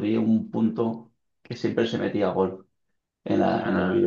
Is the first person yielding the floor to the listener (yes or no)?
no